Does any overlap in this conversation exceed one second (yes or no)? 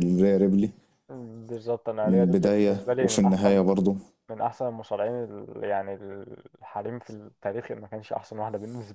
yes